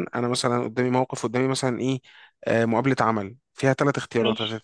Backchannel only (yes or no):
yes